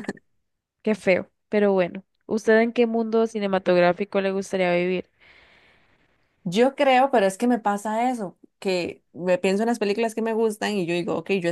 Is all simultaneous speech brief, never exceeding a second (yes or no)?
yes